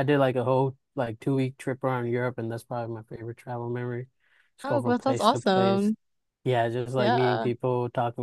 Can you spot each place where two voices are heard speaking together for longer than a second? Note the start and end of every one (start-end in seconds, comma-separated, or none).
4.6-5.9